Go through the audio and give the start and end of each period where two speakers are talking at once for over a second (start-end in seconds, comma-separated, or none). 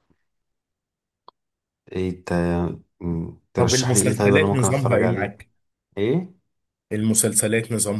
3.6-5.4